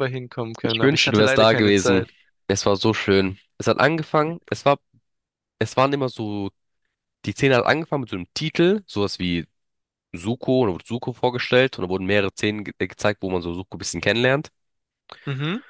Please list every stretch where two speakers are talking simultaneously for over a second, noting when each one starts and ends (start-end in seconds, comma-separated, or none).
0.7-2.1